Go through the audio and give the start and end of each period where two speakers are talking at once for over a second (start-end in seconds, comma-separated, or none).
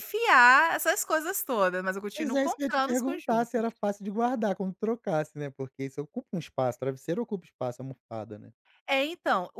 2.2-3.6